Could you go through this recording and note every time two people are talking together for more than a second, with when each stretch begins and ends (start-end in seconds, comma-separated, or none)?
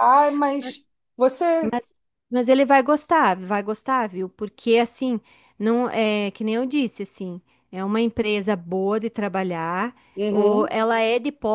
none